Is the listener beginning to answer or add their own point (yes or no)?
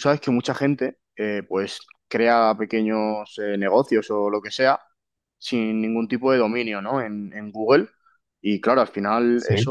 no